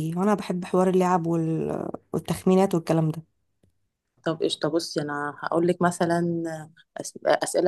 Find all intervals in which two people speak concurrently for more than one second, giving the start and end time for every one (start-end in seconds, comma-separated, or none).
none